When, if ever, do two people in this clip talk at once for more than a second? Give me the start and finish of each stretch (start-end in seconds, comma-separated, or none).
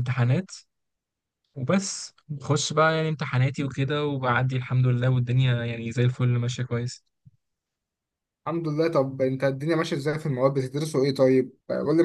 none